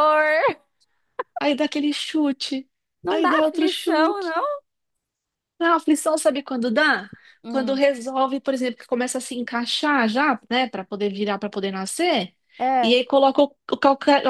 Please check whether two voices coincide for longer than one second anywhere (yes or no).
yes